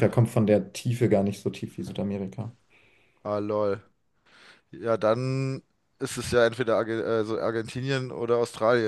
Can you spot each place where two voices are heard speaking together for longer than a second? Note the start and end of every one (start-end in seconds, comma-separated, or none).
none